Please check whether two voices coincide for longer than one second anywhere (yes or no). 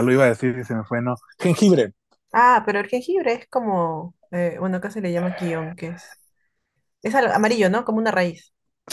no